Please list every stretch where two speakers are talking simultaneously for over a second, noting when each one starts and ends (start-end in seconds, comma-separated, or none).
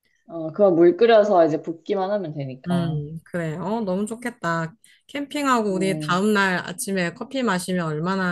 none